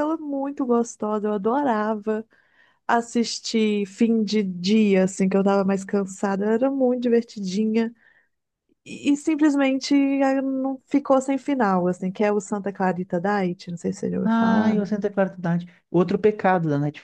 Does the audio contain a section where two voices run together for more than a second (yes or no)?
no